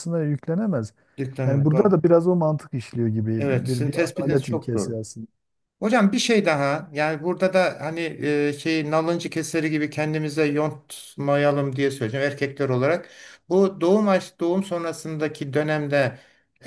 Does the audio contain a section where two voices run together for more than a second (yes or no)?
yes